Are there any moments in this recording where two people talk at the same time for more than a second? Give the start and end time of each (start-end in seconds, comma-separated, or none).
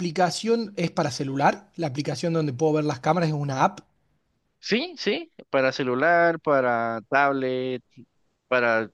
none